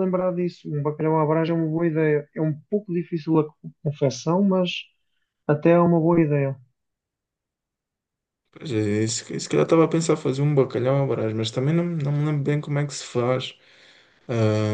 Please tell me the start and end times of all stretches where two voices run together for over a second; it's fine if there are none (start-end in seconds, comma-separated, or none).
none